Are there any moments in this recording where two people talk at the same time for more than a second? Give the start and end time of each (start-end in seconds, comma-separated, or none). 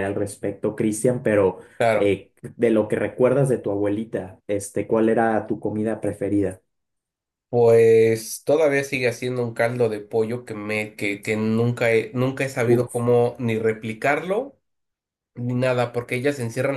none